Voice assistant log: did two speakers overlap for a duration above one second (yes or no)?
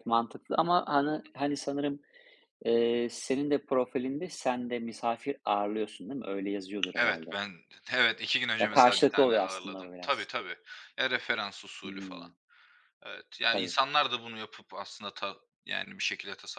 yes